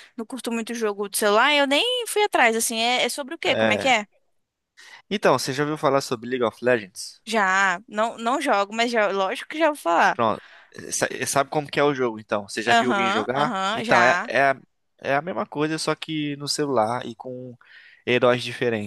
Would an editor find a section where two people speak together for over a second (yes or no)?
yes